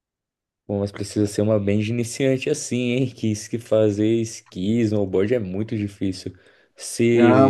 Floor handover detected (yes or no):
yes